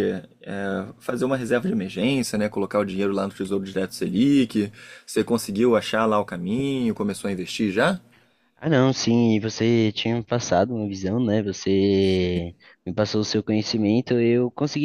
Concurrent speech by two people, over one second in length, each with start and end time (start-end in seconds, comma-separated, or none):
none